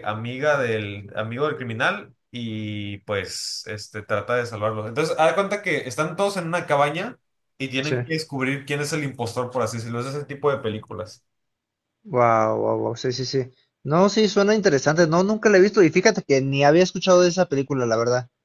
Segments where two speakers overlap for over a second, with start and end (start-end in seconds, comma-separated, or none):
none